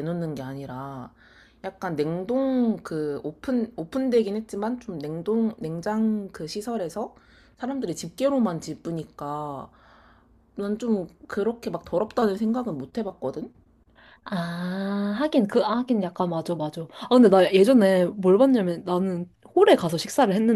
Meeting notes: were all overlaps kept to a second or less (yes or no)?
yes